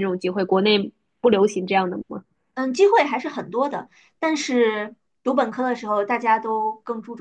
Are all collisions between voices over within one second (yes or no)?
yes